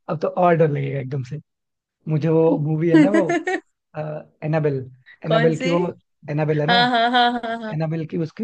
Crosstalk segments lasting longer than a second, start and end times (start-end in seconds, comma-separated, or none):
none